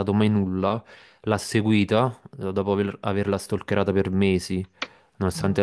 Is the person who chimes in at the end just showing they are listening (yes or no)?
yes